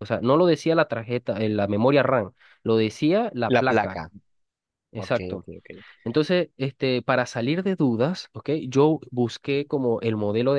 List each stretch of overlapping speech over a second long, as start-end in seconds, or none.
none